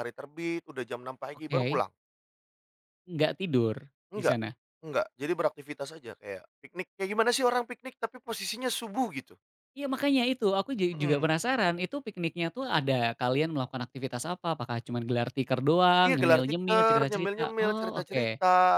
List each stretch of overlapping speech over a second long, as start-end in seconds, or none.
16.0-18.2